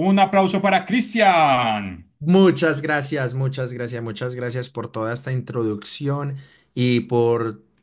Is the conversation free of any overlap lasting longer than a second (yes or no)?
yes